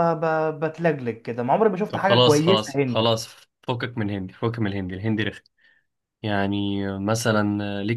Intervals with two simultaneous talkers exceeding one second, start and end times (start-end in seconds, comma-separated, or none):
1.9-3.1